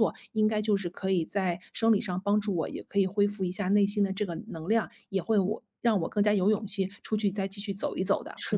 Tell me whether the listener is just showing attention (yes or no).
no